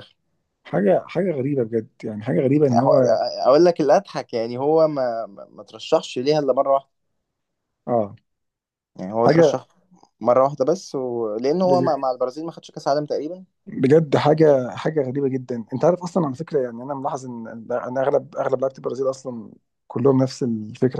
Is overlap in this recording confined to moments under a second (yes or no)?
yes